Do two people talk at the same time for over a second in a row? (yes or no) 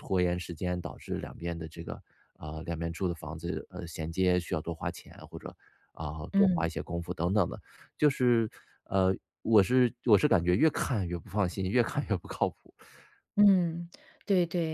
no